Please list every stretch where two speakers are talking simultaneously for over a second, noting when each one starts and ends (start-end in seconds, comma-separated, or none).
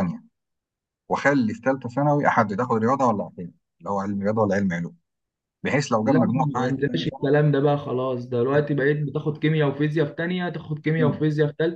6.1-7.3